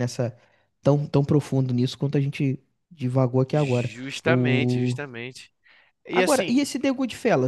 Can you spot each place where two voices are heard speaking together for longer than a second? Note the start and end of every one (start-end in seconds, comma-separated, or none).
3.5-5.0